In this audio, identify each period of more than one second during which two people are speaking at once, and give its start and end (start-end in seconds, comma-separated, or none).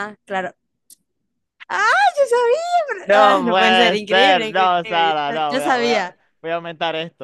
3.1-6.2